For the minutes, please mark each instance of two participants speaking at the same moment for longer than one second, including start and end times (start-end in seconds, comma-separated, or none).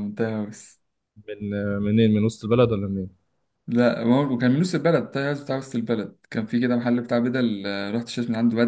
none